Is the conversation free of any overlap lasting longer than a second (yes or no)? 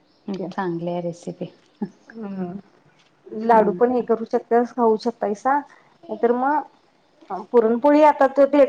yes